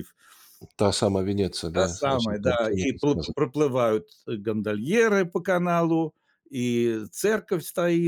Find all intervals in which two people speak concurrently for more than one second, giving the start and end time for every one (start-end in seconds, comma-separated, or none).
1.7-3.4